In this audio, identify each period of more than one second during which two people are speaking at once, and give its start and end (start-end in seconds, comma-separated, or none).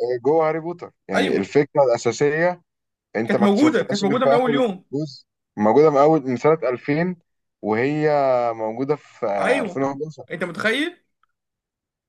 3.3-4.8